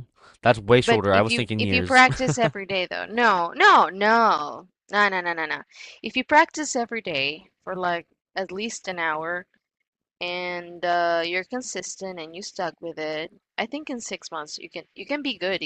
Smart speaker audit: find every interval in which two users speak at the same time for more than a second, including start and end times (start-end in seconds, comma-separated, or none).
0.8-2.0